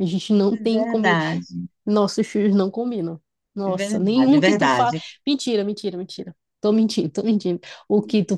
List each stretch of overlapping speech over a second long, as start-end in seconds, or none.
3.6-5.0